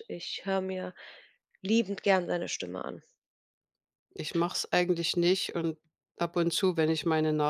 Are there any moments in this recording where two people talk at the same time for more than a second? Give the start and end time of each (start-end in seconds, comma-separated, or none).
none